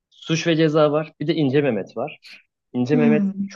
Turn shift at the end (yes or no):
no